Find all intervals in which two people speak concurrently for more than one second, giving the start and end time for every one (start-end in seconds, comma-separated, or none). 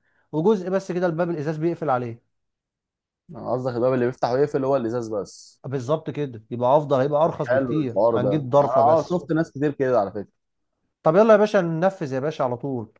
7.5-9.2